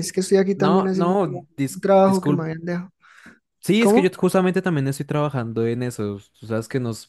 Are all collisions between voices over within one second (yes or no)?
no